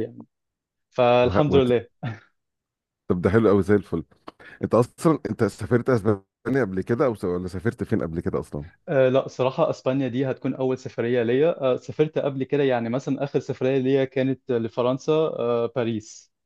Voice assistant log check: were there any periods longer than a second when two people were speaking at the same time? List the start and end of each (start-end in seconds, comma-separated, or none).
none